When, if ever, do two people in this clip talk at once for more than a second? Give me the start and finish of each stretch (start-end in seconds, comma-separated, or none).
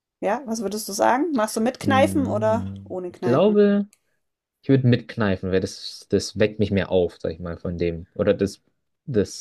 1.8-3.7